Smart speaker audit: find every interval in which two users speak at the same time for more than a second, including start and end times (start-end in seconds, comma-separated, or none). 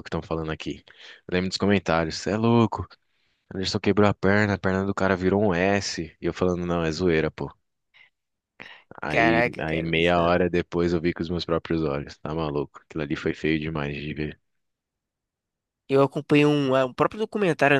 9.1-10.3